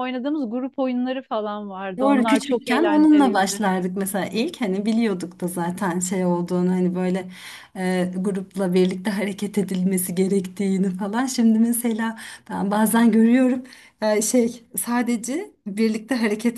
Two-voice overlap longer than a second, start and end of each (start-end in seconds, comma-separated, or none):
2.0-3.6